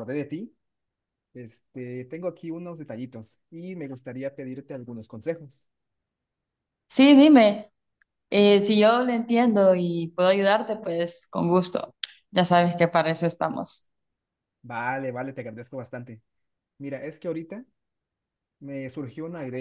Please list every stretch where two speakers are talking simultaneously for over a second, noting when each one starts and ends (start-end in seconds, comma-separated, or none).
none